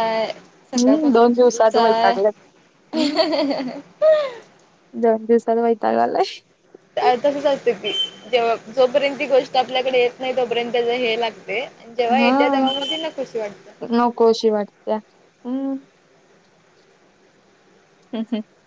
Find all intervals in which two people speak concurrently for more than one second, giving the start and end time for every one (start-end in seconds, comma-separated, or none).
0.8-2.1